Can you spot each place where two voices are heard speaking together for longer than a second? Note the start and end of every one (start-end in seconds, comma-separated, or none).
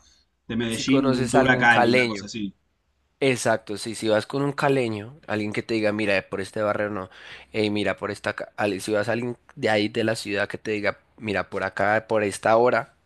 0.7-2.2